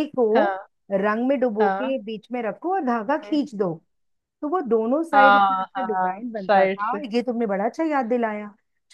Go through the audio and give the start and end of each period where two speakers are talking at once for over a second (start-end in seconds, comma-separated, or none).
5.1-7.0